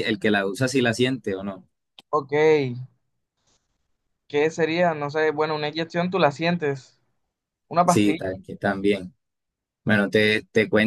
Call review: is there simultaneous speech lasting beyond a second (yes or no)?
no